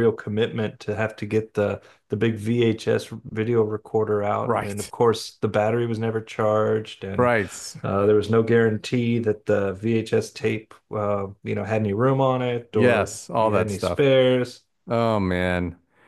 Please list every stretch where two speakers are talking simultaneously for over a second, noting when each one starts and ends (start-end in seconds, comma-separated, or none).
12.7-14.1